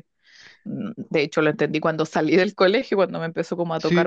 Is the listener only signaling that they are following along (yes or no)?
no